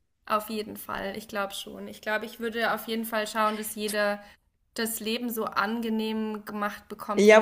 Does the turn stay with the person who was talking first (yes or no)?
no